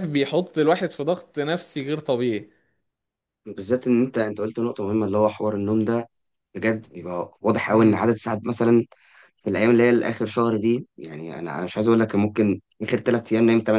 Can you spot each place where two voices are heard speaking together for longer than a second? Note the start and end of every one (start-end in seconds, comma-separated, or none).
none